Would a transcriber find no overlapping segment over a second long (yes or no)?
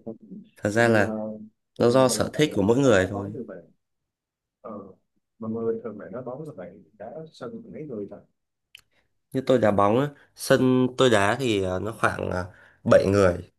no